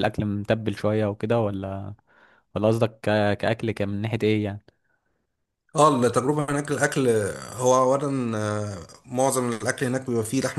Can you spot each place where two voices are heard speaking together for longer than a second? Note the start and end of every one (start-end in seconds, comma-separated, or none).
none